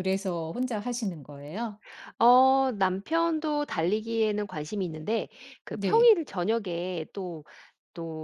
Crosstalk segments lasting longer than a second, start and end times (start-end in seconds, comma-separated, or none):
none